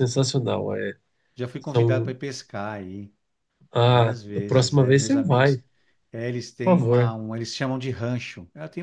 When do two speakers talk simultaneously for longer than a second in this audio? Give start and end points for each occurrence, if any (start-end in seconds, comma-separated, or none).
3.9-5.6